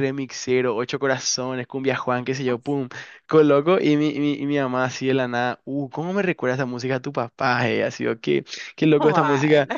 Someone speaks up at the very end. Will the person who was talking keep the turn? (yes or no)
yes